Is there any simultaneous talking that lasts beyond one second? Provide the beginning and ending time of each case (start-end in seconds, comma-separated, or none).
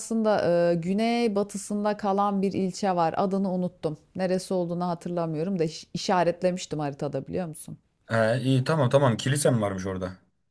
none